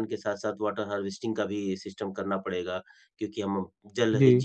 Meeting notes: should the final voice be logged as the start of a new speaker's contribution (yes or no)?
no